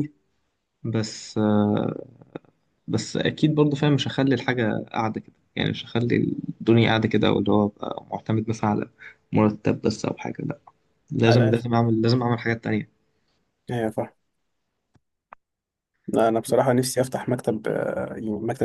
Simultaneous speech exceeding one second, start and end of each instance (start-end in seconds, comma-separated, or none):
none